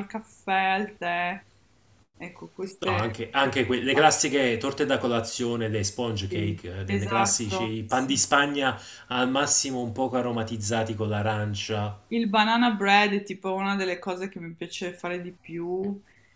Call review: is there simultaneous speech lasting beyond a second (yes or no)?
yes